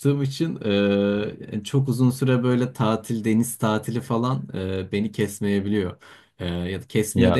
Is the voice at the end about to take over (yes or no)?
no